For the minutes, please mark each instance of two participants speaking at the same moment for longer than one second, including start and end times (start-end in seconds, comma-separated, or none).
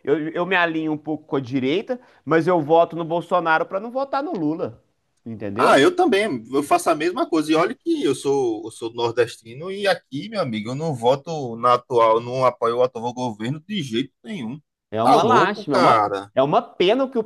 15.0-16.3